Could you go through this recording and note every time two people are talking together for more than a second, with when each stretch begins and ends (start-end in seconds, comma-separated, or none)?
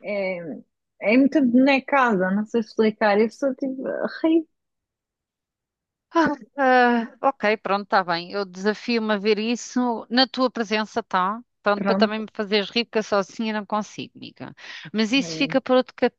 none